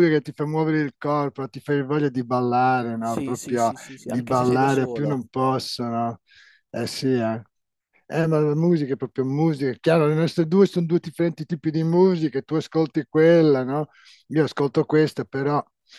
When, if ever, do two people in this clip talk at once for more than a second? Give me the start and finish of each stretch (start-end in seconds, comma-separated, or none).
3.0-5.2